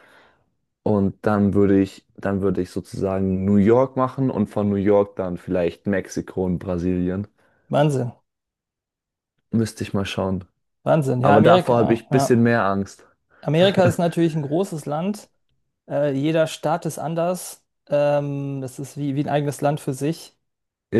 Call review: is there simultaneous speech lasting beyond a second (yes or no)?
yes